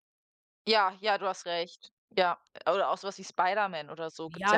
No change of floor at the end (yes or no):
no